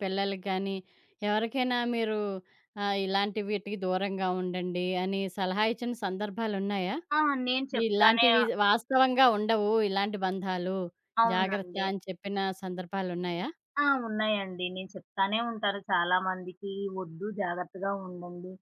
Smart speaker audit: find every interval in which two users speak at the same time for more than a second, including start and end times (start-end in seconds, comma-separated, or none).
none